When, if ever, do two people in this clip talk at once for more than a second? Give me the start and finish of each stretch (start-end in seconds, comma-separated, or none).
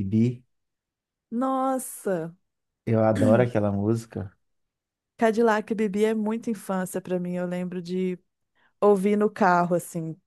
none